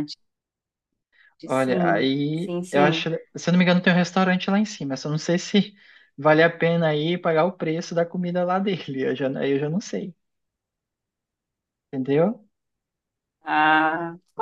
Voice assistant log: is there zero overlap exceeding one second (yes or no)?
no